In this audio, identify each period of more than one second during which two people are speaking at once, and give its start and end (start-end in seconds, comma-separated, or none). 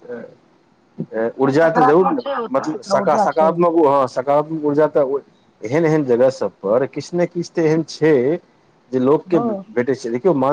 1.4-3.5